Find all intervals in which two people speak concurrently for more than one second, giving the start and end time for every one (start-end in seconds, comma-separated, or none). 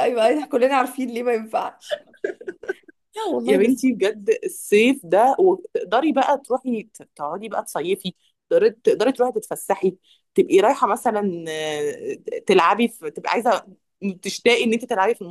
none